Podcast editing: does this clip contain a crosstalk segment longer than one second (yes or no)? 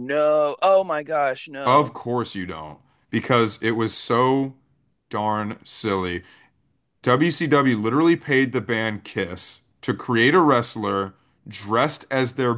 no